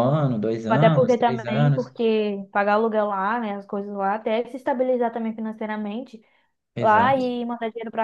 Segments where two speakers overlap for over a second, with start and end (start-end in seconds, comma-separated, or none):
0.7-1.9